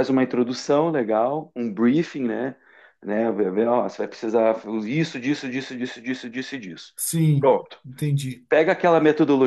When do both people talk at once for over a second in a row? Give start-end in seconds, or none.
none